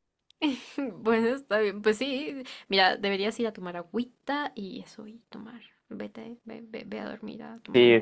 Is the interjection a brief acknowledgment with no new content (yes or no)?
no